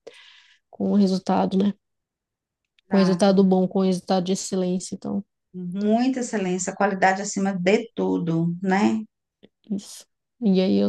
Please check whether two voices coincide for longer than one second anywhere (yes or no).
no